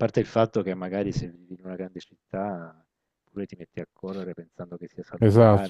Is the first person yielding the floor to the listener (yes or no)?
yes